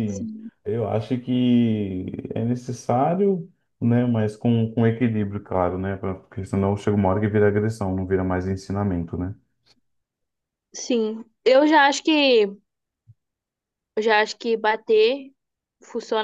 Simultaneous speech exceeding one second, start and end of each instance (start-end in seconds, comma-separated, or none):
none